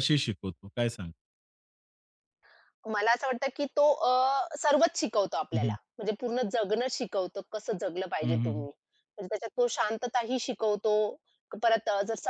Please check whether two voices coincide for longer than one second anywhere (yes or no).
no